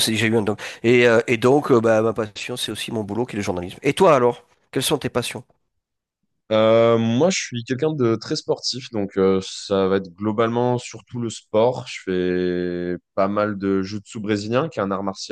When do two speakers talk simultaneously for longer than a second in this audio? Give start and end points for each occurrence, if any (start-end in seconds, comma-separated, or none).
none